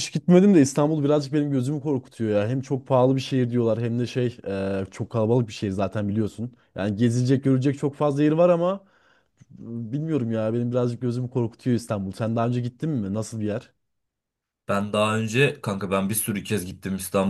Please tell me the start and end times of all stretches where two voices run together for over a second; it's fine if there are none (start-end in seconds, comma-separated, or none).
none